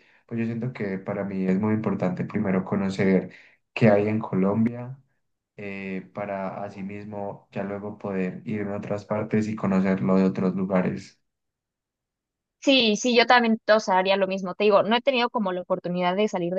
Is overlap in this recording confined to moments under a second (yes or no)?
yes